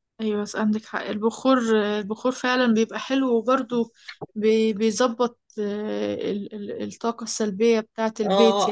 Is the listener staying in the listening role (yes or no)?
no